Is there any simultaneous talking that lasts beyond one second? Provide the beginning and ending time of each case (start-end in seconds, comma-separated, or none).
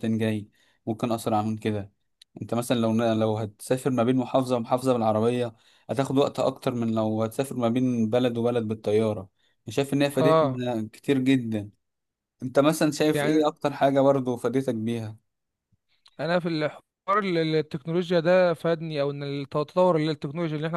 none